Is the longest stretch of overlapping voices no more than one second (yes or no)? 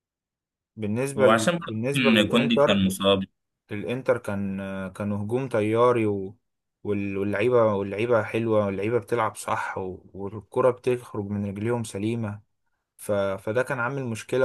no